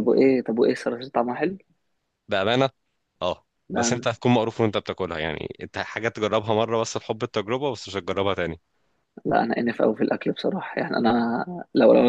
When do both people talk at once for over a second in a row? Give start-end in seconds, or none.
none